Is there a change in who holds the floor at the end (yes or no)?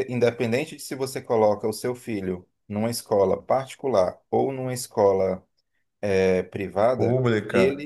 yes